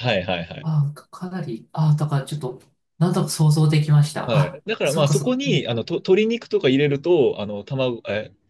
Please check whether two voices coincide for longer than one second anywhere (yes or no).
yes